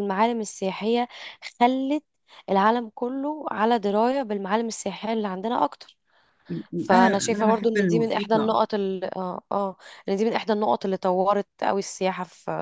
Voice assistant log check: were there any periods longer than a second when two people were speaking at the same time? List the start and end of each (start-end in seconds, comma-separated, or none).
6.9-8.6